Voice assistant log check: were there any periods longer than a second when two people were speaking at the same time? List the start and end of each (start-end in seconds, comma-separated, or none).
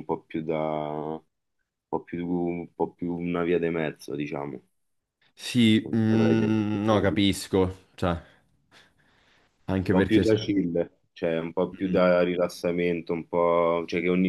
5.8-7.2